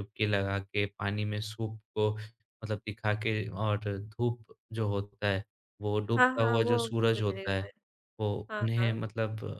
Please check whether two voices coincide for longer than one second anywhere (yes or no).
yes